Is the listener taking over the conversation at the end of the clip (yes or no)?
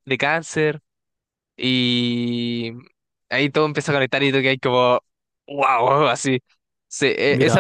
no